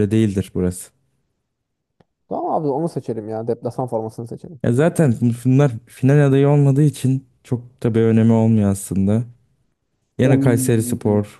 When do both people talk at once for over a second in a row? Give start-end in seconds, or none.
none